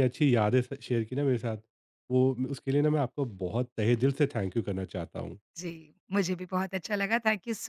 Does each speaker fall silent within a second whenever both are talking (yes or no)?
yes